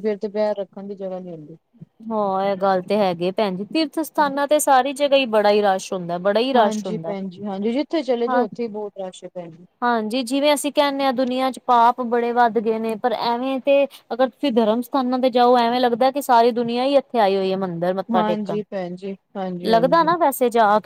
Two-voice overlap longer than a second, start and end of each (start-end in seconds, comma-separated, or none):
none